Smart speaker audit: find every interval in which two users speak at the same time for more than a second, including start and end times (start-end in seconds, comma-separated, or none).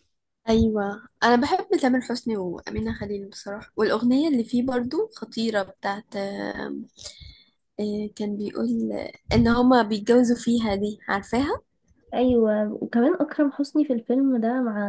none